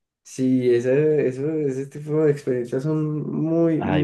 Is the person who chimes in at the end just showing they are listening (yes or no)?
no